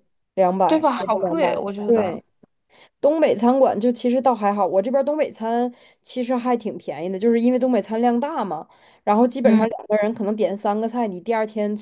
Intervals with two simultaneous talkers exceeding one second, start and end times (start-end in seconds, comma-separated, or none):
0.7-2.2